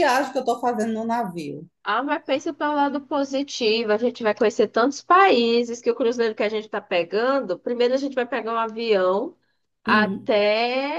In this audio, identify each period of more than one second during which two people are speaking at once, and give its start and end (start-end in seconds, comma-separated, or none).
none